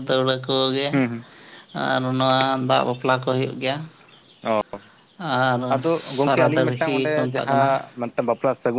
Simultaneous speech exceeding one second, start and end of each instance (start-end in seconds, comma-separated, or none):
5.7-7.7